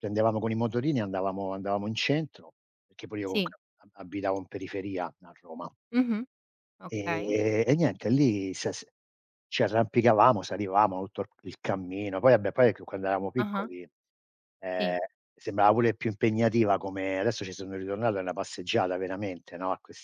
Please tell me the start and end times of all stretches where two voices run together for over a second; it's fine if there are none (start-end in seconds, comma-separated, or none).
none